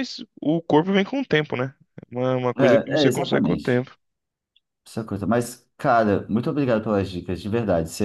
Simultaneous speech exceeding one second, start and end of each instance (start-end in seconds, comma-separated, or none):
2.6-3.9